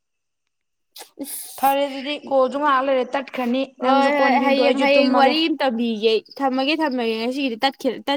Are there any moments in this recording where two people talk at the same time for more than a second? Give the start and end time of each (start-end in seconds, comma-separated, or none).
3.9-5.3